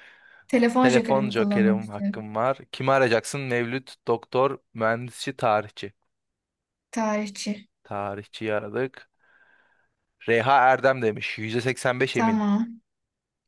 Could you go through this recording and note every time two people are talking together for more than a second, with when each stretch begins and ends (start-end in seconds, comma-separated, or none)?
0.8-2.3